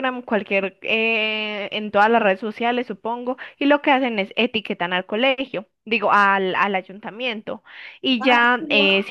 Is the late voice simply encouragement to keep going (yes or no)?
yes